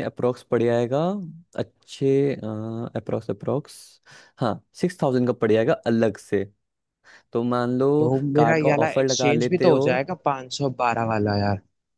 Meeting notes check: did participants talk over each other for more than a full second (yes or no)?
yes